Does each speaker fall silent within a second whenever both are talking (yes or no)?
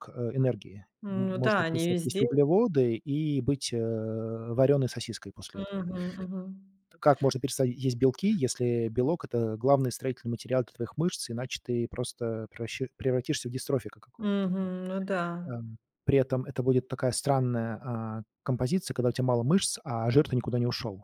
no